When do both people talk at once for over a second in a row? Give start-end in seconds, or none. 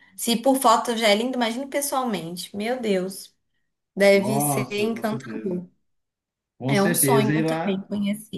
4.1-5.6, 6.7-7.9